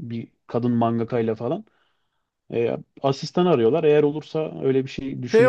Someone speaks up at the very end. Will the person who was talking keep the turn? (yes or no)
no